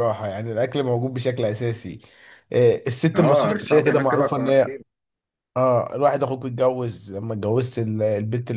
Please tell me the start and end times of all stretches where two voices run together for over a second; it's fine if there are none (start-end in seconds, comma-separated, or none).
3.1-4.8